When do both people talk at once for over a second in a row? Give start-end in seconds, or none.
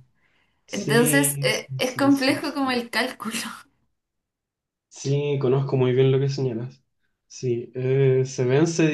0.7-2.8